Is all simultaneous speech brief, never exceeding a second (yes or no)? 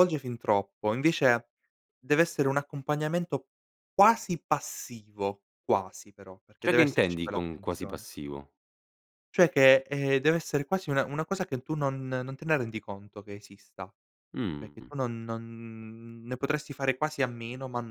no